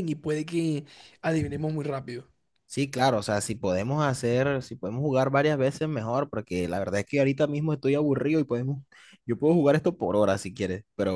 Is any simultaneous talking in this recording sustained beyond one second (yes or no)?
no